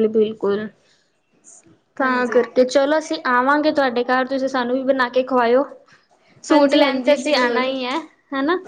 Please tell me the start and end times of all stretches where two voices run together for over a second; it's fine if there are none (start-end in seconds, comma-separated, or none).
6.5-7.7